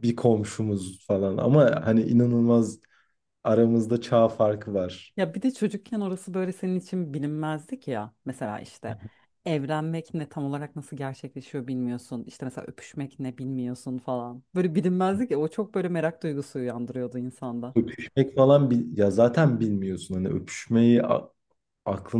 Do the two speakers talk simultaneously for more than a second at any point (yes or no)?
no